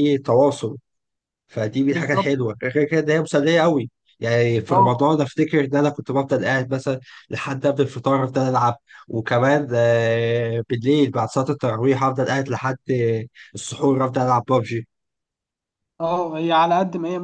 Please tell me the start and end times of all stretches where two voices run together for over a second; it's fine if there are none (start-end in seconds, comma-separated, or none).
none